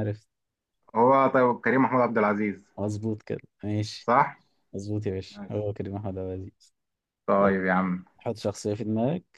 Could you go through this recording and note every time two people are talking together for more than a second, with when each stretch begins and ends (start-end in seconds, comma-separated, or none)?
none